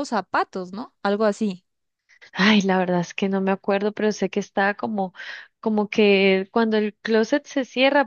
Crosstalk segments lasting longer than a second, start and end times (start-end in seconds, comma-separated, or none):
none